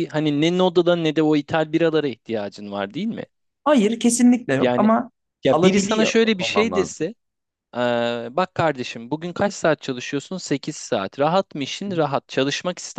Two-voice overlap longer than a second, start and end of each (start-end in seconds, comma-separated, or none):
5.5-7.1